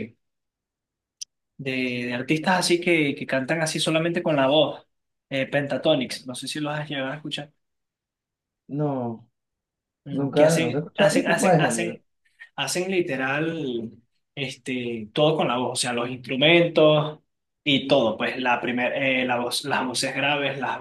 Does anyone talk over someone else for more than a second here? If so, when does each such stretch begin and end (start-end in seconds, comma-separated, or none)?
10.1-12.0